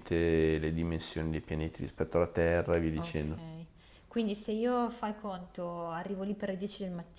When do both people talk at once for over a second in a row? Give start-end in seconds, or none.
none